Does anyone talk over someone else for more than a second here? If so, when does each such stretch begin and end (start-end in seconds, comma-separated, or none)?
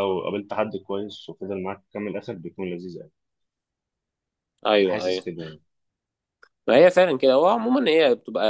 none